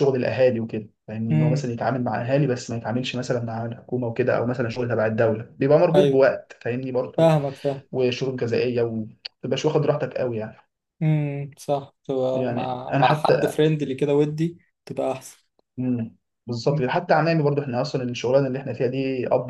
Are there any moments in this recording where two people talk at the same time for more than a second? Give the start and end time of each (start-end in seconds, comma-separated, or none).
12.3-13.6